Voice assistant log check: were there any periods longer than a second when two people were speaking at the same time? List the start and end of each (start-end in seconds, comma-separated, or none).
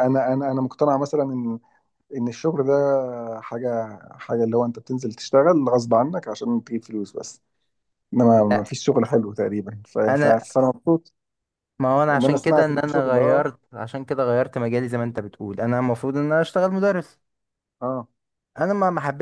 12.1-13.4